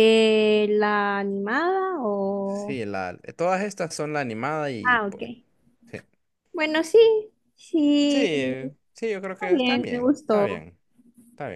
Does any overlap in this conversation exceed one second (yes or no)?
yes